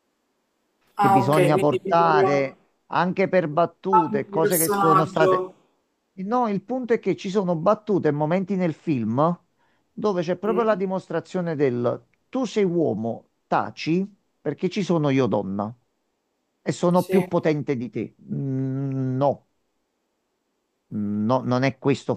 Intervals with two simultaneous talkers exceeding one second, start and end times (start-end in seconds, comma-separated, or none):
1.0-2.5, 3.9-5.5